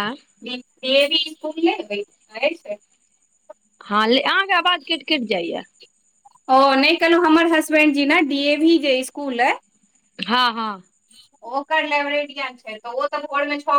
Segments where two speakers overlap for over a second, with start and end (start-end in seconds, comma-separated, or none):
none